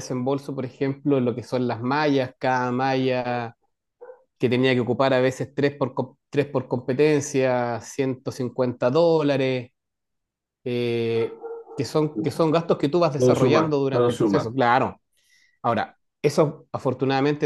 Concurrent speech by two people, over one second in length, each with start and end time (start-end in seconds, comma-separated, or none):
13.2-14.5